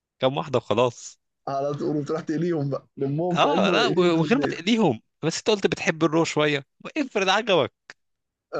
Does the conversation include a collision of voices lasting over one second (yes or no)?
yes